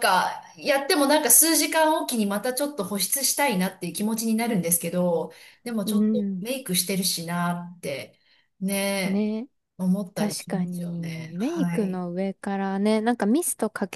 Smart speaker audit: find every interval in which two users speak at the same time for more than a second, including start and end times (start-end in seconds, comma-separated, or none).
10.1-12.0